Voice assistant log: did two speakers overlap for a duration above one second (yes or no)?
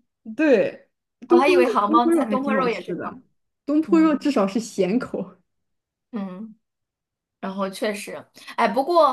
yes